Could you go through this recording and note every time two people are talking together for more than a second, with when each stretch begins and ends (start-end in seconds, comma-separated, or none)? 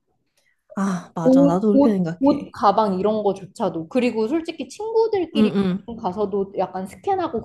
1.2-2.5